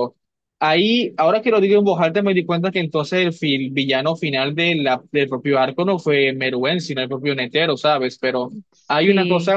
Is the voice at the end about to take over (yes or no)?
no